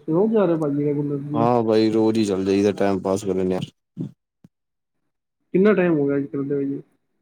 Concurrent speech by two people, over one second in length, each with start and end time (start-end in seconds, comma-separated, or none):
none